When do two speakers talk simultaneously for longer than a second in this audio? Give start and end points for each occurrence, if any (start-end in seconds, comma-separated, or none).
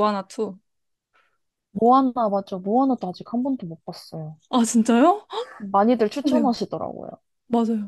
none